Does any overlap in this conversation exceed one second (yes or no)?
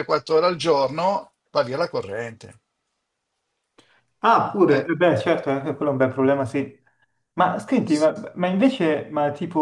no